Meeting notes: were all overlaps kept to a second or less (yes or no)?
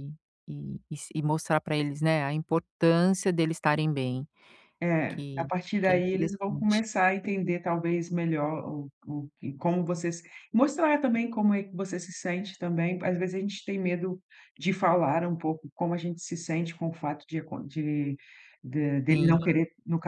no